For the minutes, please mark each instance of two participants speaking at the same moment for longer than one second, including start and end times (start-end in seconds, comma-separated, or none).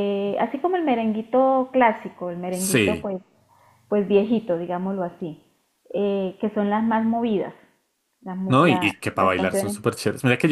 8.4-9.8